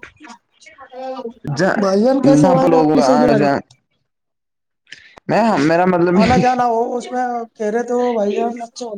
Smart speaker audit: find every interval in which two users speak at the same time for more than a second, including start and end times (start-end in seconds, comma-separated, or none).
1.8-3.1